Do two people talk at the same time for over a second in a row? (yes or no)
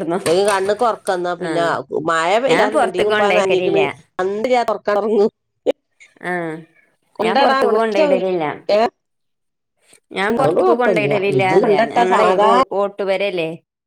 yes